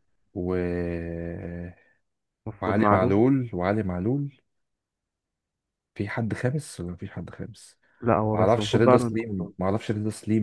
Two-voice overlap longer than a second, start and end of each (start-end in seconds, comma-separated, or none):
8.3-9.5